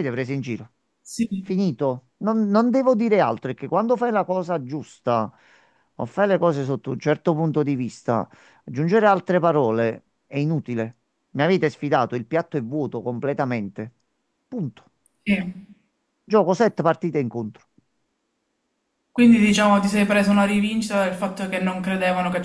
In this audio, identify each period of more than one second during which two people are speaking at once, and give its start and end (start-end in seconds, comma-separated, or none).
none